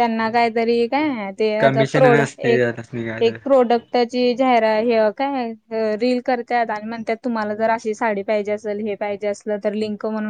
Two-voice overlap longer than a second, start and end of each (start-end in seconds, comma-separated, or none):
1.6-3.4